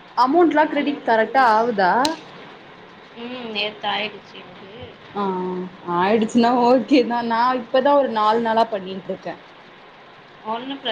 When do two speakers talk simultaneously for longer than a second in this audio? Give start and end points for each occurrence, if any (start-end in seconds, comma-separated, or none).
none